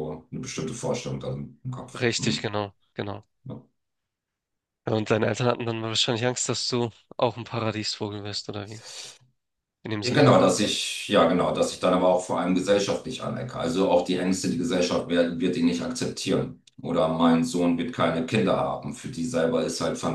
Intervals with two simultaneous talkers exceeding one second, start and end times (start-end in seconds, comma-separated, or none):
none